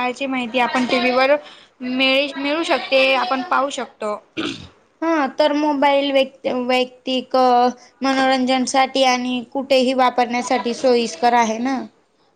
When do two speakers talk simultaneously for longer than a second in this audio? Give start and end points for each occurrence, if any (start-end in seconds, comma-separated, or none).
none